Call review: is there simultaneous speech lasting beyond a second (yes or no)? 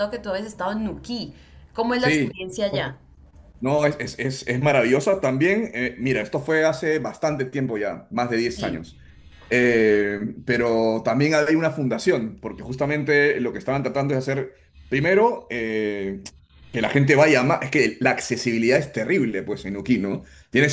no